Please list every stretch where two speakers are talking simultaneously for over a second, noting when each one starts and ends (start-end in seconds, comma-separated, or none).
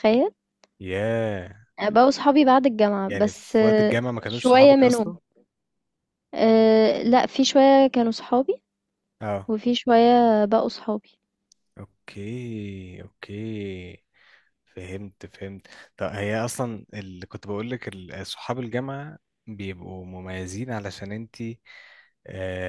3.1-5.1